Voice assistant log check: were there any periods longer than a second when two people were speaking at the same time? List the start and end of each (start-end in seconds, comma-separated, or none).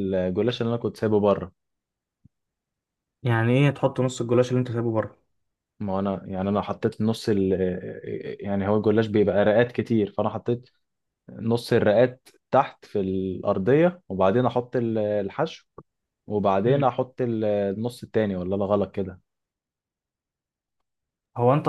none